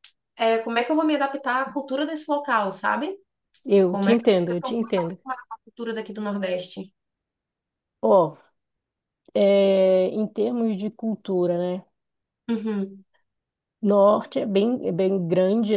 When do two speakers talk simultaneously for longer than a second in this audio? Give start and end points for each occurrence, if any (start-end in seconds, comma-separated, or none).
3.9-5.2